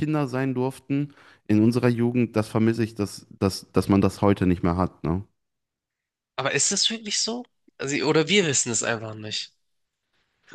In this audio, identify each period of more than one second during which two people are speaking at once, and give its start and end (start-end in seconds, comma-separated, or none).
none